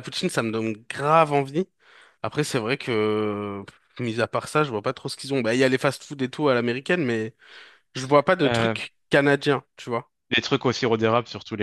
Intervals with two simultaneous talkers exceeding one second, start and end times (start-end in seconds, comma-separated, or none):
none